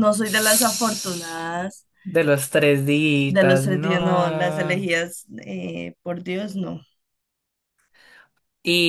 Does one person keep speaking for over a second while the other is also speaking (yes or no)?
yes